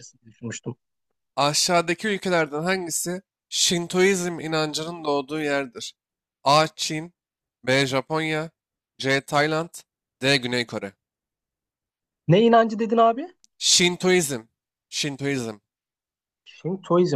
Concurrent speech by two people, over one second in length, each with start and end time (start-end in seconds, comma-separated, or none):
none